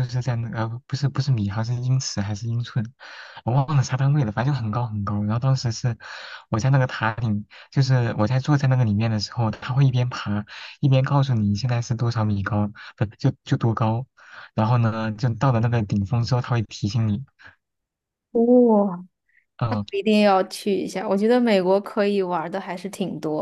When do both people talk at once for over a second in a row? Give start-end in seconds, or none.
none